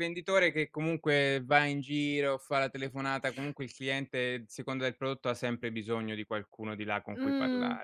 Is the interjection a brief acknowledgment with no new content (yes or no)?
no